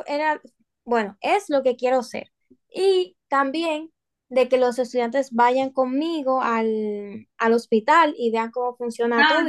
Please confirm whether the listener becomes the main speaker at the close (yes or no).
yes